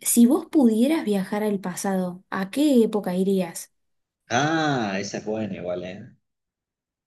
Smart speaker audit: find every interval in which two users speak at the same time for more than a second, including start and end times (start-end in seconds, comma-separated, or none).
none